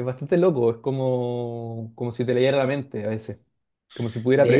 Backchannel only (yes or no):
yes